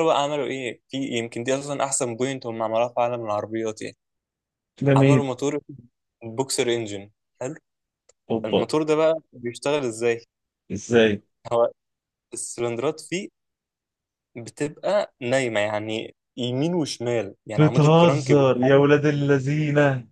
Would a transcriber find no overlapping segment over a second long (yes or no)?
no